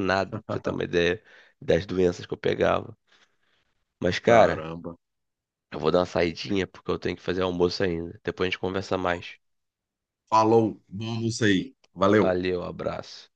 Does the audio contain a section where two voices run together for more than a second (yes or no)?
no